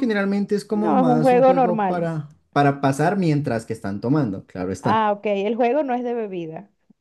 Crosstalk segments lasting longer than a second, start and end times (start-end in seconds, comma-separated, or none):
0.7-2.1